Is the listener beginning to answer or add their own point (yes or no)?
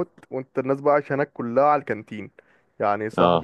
no